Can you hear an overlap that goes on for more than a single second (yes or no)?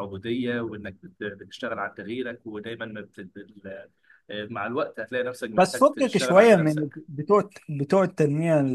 yes